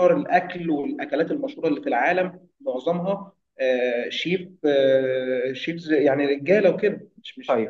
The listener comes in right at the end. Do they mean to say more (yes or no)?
yes